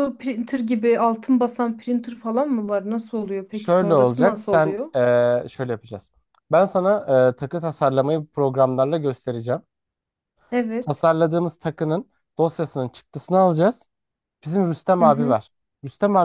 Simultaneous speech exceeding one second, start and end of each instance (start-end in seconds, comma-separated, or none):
3.5-4.9